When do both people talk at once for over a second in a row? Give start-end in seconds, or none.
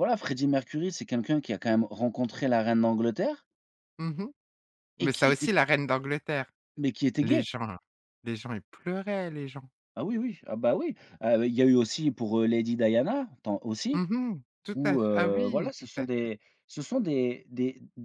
14.7-16.3